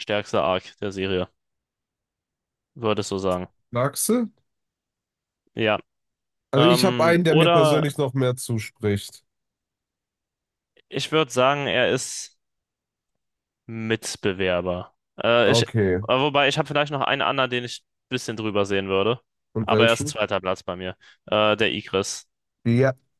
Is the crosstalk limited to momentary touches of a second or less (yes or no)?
no